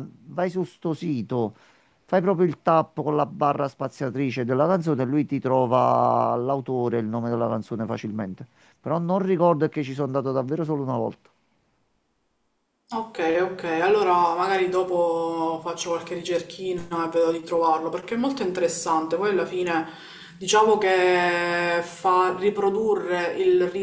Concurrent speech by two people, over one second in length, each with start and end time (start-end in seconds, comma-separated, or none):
none